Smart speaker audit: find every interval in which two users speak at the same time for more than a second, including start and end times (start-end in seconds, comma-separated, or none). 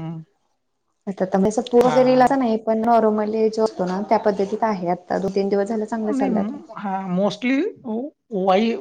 none